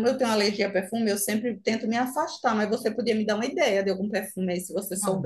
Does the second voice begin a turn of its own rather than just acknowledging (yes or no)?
yes